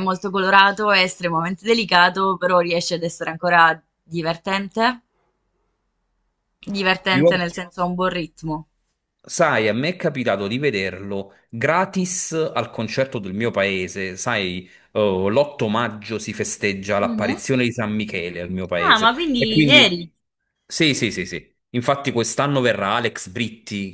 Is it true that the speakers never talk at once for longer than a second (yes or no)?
no